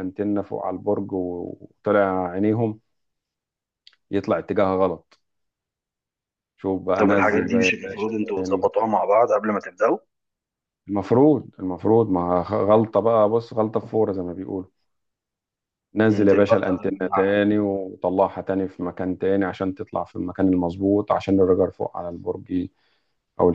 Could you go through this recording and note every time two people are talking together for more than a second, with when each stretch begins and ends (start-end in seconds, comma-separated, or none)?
7.0-8.7, 16.1-17.5